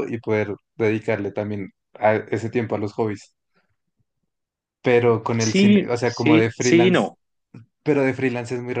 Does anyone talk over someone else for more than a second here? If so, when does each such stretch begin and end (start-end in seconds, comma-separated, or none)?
5.4-7.1